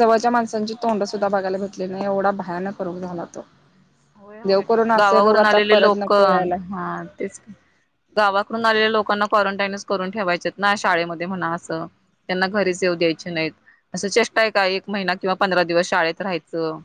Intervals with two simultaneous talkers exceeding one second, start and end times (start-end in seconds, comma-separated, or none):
4.5-6.5